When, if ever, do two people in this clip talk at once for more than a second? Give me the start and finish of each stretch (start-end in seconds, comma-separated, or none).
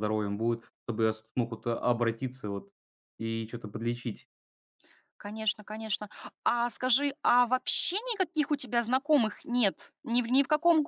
none